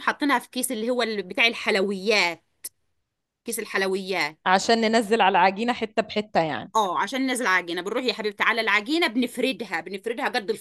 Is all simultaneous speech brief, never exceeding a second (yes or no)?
yes